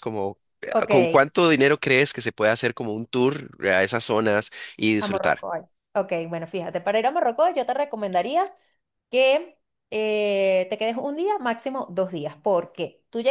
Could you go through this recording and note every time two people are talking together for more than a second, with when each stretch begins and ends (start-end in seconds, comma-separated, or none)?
none